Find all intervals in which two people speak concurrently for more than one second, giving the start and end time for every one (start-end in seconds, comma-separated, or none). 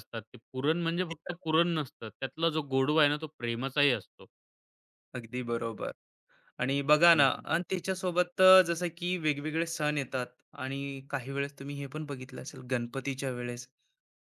none